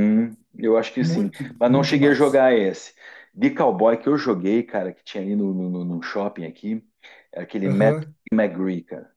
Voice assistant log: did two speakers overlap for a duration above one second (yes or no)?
yes